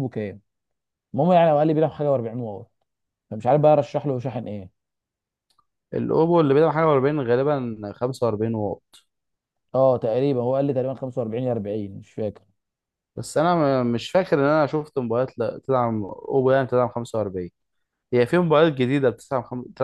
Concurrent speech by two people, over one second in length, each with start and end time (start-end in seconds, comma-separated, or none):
none